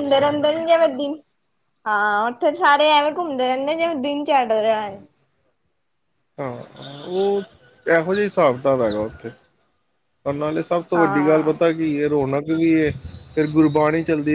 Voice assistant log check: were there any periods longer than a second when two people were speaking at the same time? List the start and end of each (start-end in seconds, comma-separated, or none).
none